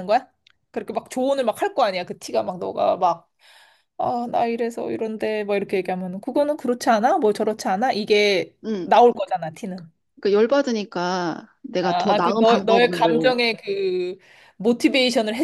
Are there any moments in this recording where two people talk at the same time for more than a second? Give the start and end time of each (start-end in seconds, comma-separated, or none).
11.8-13.3